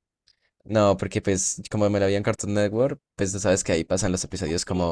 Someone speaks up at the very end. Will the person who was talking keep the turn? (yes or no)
no